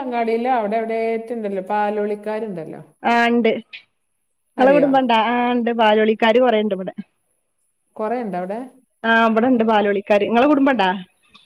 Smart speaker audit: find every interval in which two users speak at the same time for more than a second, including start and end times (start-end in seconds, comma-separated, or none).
none